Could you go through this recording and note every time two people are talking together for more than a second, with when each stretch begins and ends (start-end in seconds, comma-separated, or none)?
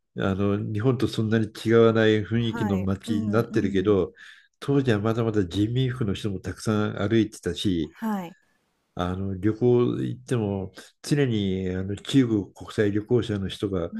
2.4-4.1